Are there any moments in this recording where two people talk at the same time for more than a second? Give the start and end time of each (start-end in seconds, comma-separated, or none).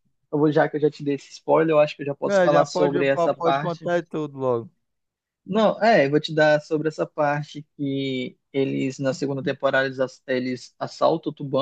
2.3-3.9